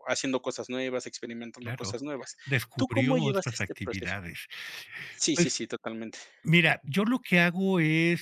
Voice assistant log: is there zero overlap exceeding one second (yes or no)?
no